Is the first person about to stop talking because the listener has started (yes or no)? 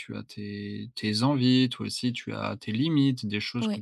no